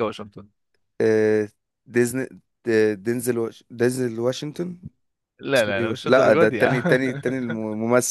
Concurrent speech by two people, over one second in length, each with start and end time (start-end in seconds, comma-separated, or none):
5.5-7.0